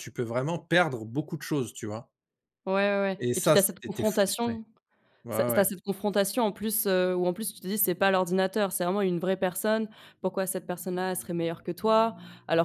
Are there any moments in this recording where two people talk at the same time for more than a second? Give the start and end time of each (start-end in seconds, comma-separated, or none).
3.2-4.6